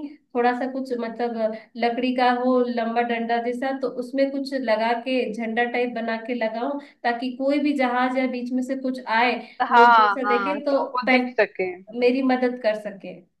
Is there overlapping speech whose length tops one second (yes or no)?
yes